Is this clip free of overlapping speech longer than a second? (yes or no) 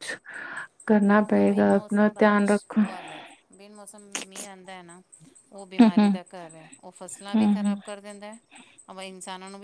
no